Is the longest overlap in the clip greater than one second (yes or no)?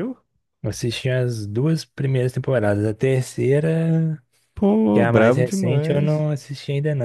yes